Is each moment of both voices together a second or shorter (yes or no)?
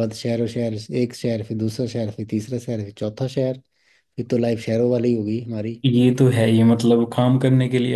yes